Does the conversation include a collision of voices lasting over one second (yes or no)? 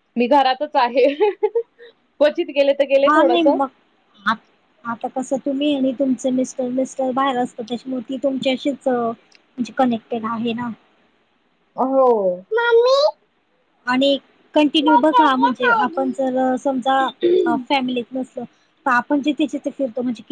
yes